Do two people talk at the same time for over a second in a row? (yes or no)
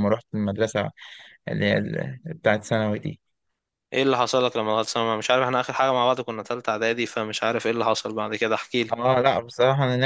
no